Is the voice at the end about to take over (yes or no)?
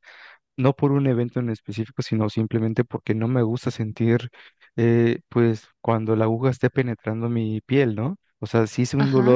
no